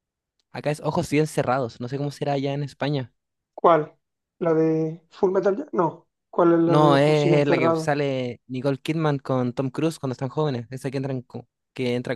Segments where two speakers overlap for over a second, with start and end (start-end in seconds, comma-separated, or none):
6.7-7.9